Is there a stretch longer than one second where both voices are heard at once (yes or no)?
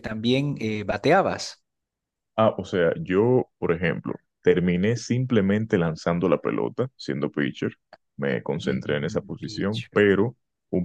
yes